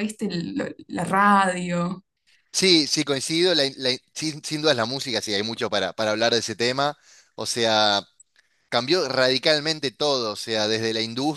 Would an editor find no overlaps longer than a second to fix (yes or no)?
yes